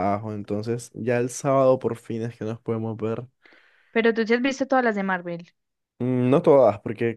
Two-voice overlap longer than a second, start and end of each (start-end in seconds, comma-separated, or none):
none